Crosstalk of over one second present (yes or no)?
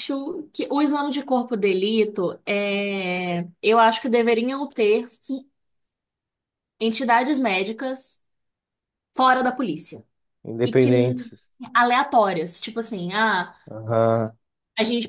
no